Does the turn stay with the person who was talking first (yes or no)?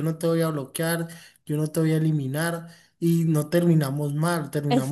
no